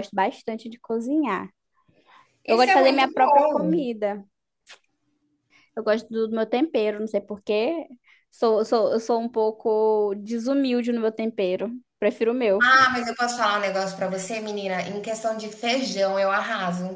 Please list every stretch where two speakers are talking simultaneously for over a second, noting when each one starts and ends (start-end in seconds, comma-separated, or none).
2.5-3.8